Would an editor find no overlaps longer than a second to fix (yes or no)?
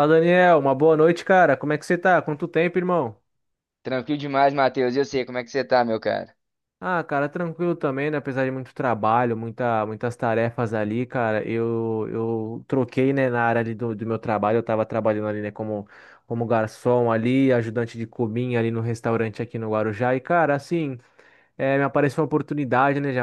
yes